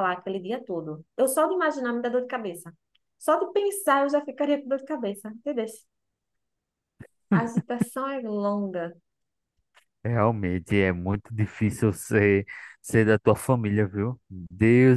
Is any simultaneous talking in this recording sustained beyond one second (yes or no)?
no